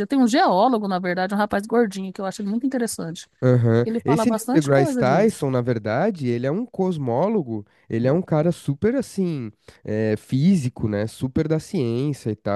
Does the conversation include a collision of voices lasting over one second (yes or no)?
yes